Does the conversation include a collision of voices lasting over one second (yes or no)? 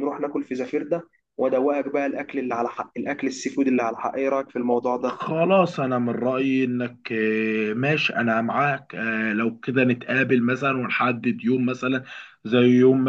no